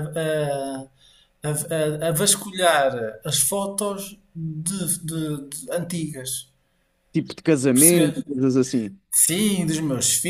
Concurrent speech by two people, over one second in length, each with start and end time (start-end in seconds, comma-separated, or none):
none